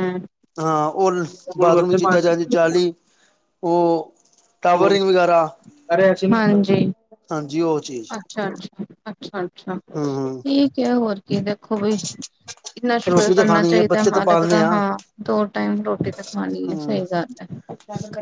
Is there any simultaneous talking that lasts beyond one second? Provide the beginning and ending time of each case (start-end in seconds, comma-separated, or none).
13.1-14.7